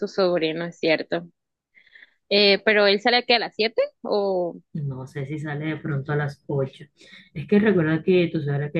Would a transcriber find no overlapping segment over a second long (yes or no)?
yes